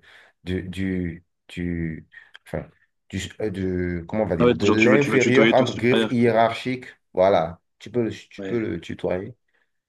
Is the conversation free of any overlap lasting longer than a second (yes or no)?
no